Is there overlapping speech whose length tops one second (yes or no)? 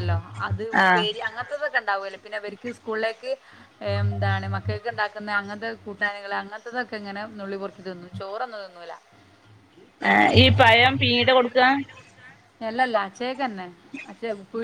no